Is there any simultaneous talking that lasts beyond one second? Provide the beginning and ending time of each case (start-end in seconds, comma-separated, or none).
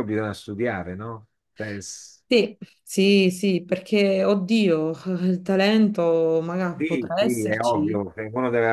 6.8-8.0